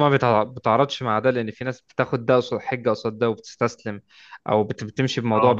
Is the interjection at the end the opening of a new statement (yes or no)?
no